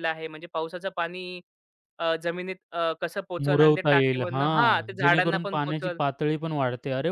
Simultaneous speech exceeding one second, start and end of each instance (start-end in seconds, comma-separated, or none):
3.4-6.0